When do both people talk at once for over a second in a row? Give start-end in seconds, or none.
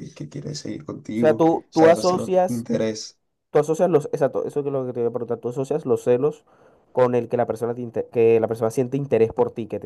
1.1-2.7